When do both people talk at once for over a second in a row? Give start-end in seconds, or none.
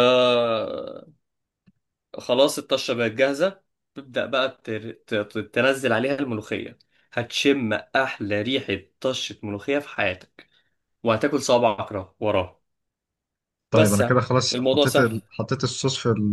13.7-15.1